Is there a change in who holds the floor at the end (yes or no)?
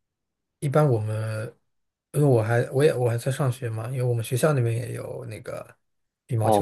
yes